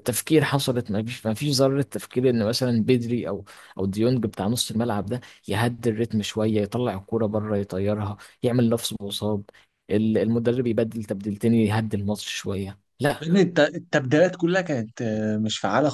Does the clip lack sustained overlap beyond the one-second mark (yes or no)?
yes